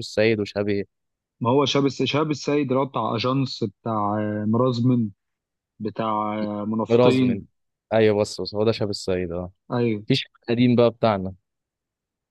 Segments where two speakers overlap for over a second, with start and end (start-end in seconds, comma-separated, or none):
none